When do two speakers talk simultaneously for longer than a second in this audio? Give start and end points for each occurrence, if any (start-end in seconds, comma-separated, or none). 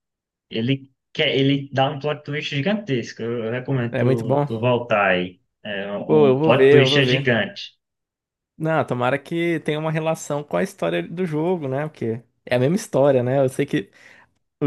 6.1-7.3